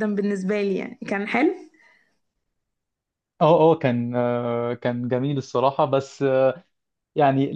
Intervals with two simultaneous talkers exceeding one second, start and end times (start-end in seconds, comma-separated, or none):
none